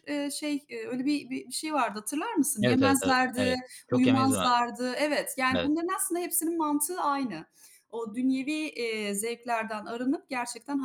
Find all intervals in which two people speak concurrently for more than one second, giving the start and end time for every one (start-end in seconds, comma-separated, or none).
2.6-4.5